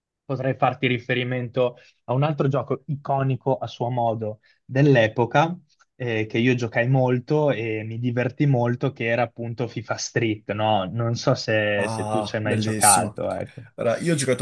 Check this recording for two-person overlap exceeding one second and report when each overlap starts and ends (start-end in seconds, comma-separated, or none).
11.8-13.2